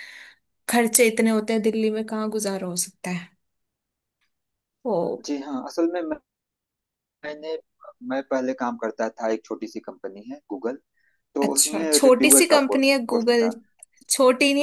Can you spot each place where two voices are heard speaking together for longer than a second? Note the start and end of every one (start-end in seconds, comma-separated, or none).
11.4-13.5